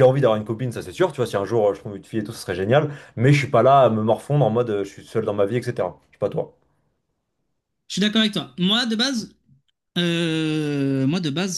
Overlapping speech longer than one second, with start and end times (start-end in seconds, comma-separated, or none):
none